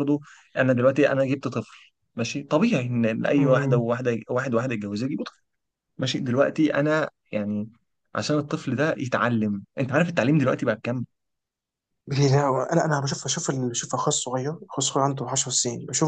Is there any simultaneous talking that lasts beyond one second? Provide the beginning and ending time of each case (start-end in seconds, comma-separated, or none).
none